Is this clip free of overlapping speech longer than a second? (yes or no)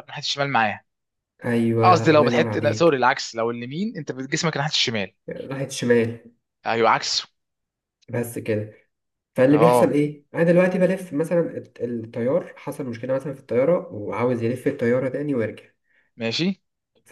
no